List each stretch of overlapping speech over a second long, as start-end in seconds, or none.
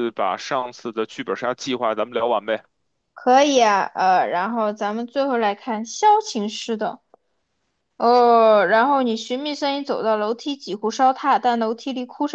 none